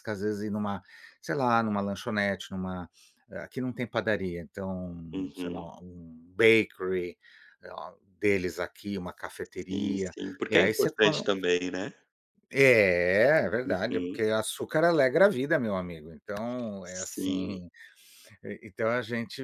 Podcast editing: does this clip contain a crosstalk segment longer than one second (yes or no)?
yes